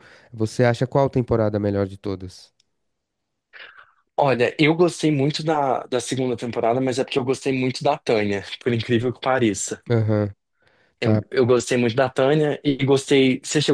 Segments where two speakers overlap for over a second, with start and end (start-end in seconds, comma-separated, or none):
none